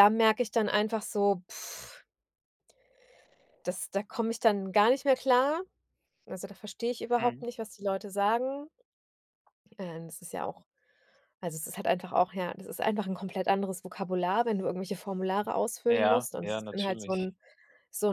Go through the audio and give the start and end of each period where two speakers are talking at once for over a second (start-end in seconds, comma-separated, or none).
15.9-17.3